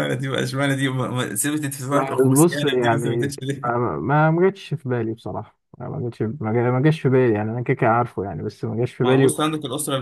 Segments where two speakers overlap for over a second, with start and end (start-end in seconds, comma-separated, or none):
1.9-3.7